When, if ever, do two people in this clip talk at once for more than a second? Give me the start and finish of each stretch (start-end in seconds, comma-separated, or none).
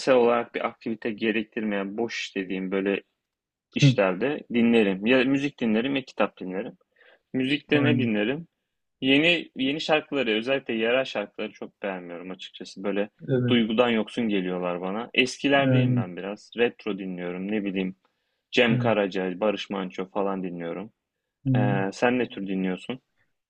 none